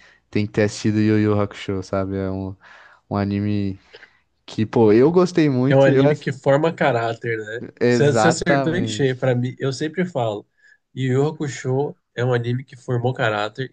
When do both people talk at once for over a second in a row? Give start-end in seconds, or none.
7.8-9.1